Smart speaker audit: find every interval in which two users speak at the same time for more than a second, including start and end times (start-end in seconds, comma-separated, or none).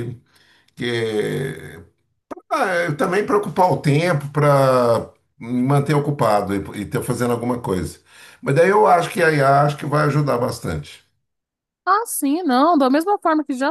none